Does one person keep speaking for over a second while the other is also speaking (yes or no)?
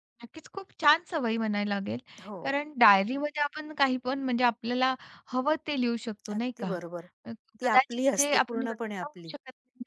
yes